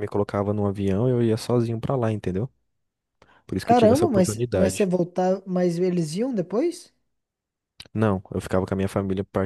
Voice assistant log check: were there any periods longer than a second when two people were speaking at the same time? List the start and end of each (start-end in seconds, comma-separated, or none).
3.6-4.9